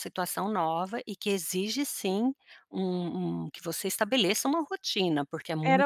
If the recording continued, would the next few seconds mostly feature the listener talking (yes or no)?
yes